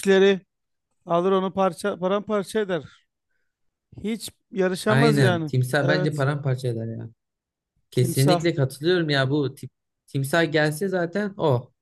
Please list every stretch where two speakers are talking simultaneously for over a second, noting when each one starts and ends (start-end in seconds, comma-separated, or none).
4.9-6.2